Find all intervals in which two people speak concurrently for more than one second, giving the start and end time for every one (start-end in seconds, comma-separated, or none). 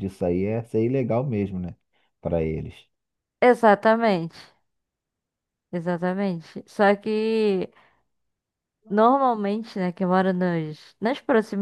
none